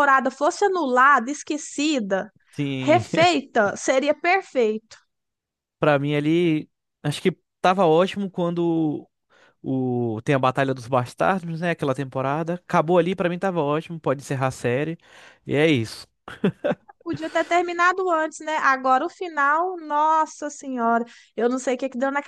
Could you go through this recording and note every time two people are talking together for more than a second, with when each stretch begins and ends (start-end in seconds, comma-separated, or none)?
none